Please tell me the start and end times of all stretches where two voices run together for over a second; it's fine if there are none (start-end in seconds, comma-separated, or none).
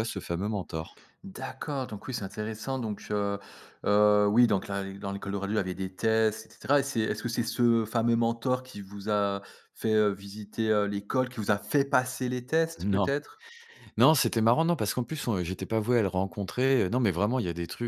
none